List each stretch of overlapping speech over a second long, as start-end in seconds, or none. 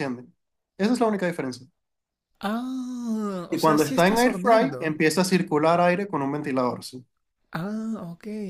3.5-4.9